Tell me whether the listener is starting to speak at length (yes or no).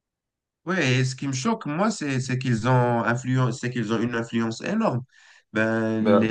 no